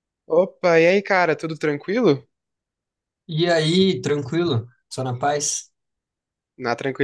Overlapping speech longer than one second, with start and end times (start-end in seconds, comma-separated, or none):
none